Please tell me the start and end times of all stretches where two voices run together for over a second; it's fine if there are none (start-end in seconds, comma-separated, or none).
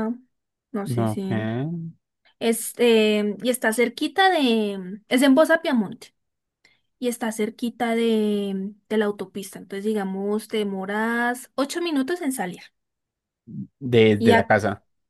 none